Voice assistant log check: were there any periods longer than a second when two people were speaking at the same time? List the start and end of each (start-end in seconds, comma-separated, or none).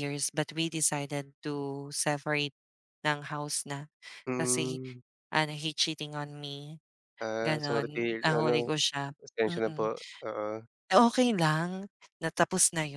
7.4-8.7